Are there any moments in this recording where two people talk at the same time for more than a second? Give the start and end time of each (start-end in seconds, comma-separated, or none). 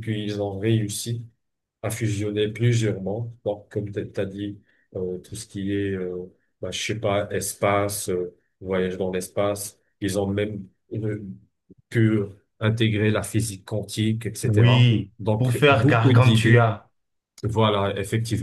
14.4-16.7